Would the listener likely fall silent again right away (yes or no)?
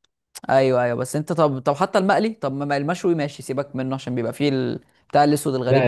no